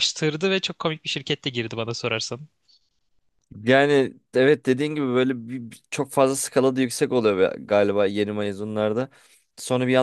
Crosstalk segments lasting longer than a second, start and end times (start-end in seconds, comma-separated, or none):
none